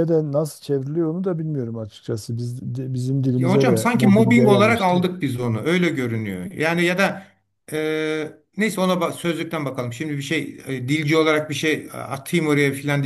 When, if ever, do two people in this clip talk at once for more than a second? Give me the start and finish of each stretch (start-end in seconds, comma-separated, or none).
3.4-5.1